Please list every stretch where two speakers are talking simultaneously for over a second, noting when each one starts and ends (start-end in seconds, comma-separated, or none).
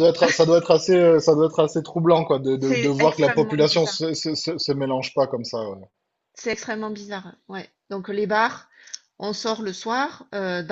2.6-4.0